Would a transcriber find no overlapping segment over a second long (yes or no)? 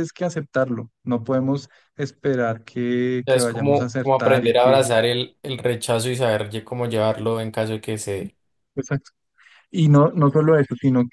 no